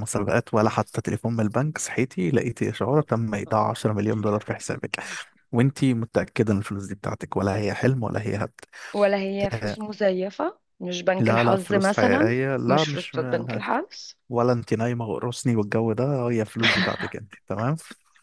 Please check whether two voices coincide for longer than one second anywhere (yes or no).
yes